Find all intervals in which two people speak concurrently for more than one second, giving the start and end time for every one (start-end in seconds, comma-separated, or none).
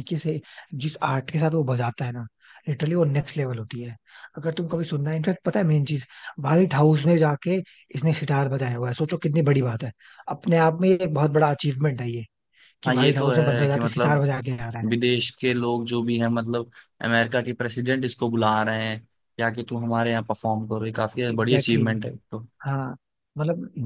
12.9-14.2